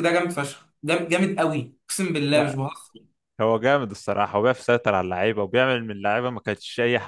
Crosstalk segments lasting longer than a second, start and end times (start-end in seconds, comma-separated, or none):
none